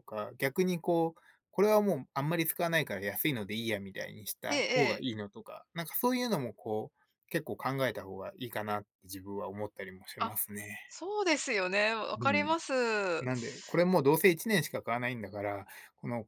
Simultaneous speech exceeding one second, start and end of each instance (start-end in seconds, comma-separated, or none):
none